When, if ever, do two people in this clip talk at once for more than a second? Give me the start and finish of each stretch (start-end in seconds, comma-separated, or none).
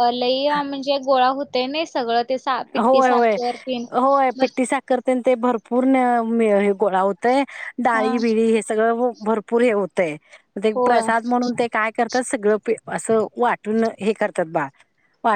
none